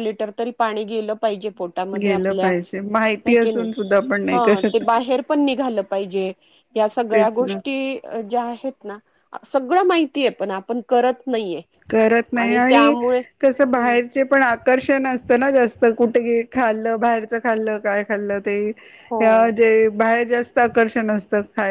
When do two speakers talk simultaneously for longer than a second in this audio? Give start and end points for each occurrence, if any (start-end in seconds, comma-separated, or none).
2.0-3.8